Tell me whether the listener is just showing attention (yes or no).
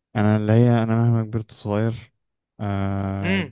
no